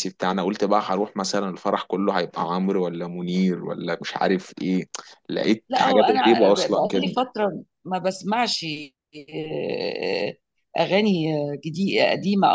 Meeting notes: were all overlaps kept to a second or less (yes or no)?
no